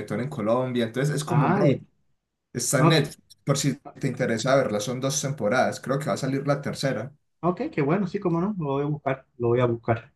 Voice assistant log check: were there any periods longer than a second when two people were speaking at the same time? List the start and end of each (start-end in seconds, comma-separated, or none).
none